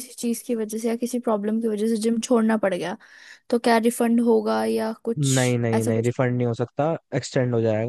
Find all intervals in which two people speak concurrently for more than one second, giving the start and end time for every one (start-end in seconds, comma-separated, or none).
none